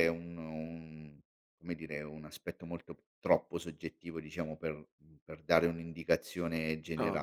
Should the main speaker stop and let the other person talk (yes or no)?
yes